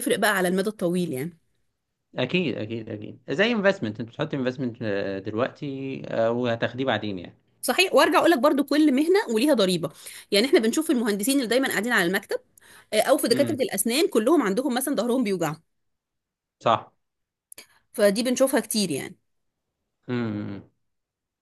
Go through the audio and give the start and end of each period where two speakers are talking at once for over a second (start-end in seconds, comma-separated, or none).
none